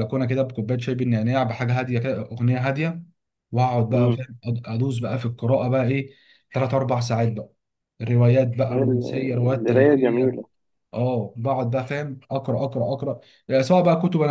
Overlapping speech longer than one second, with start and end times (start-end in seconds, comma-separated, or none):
8.7-10.4